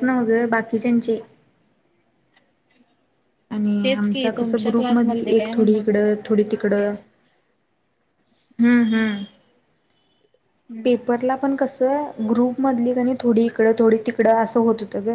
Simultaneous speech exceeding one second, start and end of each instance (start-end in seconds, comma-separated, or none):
3.8-5.8